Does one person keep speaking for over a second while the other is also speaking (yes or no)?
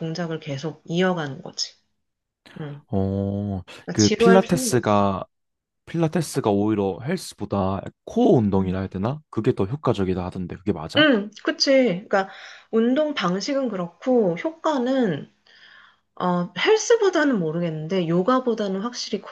yes